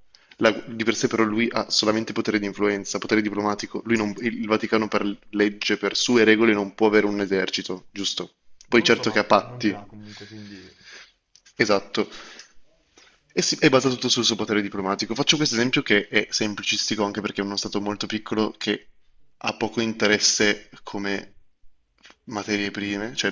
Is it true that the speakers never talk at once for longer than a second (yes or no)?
no